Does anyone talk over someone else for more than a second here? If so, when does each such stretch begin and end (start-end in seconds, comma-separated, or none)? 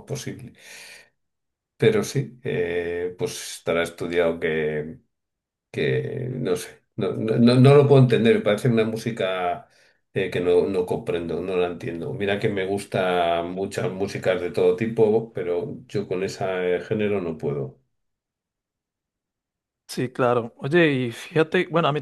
none